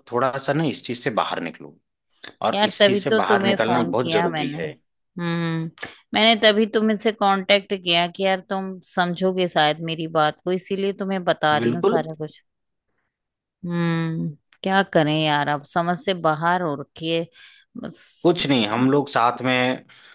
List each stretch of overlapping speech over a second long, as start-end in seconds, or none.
2.5-4.6